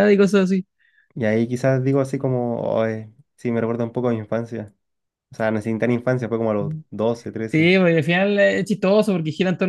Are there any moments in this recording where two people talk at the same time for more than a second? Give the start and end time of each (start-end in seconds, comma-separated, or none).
none